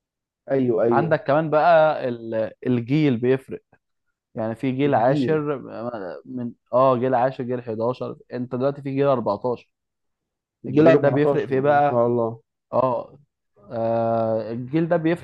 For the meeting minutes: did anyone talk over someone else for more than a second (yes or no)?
yes